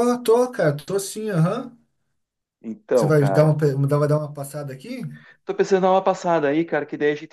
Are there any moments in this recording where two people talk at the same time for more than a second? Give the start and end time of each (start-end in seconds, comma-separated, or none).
none